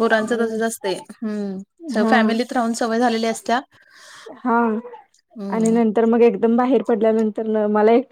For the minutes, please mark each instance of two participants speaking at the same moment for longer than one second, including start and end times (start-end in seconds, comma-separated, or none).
none